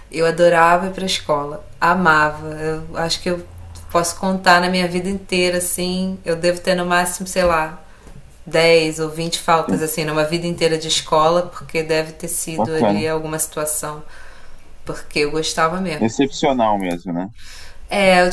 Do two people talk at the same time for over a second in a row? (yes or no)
no